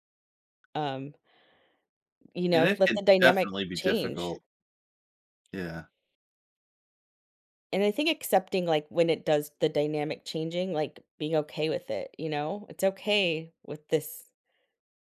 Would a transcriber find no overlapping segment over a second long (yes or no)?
no